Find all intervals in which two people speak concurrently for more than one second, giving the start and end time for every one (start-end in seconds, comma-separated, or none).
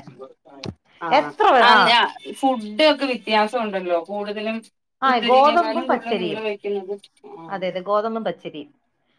5.1-6.4